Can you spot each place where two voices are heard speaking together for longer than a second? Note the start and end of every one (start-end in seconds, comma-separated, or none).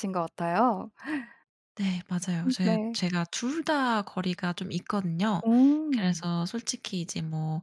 none